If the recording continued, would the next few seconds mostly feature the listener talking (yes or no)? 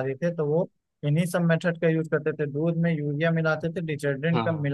no